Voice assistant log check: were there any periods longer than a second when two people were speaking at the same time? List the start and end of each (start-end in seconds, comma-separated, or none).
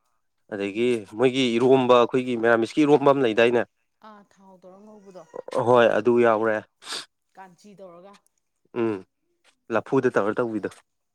none